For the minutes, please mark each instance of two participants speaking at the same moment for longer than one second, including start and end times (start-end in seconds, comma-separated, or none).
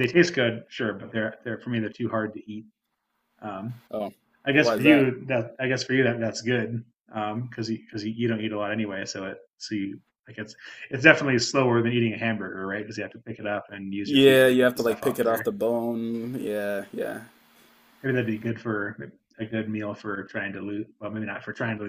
14.0-15.5